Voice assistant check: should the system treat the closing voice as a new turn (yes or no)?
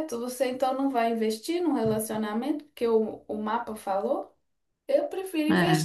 no